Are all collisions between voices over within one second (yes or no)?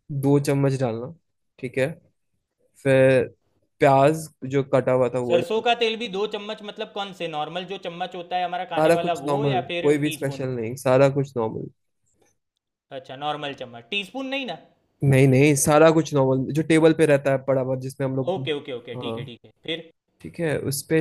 no